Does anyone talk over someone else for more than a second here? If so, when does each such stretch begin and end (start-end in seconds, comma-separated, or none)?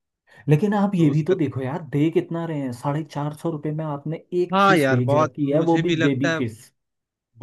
4.5-6.4